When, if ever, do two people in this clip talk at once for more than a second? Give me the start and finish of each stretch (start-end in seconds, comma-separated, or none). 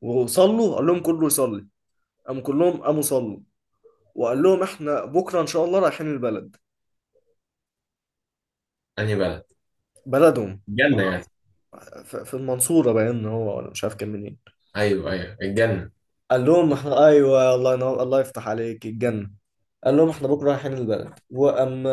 none